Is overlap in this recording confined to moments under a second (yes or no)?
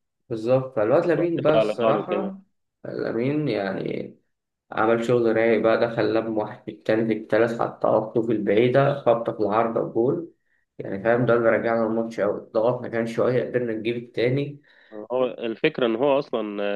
no